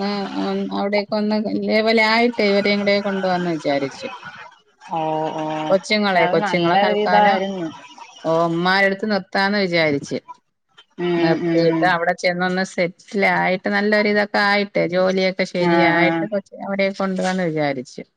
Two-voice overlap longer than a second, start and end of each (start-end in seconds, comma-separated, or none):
5.7-7.4